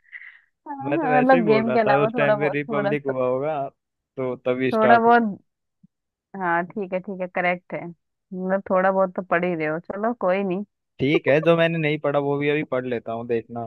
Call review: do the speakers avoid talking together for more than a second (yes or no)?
no